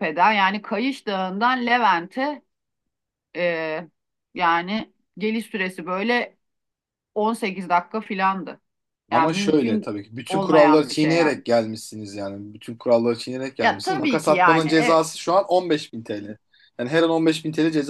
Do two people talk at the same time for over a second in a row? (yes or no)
yes